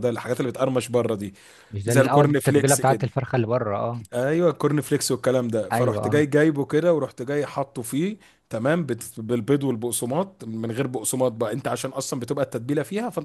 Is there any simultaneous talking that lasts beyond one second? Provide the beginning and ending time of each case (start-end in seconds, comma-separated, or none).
1.9-3.2